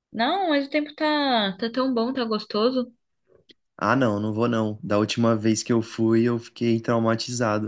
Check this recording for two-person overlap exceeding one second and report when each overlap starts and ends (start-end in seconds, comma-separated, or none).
none